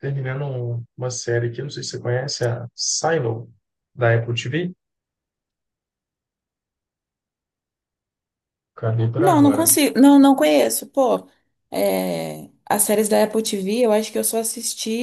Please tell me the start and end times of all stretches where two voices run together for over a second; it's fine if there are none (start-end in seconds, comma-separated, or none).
none